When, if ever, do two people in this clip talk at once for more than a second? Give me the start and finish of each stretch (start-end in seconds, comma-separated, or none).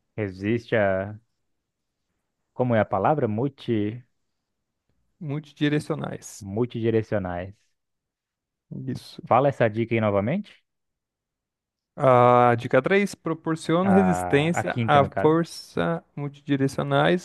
13.8-15.4